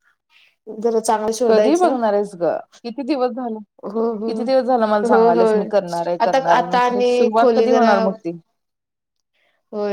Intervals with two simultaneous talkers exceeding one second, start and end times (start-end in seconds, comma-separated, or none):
6.2-7.9